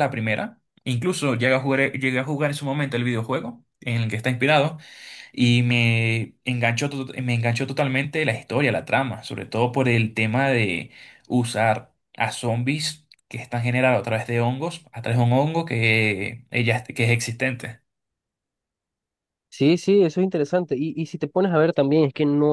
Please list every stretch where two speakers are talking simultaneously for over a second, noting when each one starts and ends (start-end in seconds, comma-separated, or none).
none